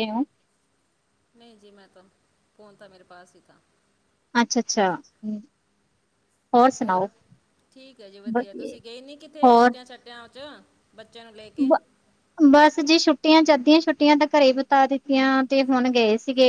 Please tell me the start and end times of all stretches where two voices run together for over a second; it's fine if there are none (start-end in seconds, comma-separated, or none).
none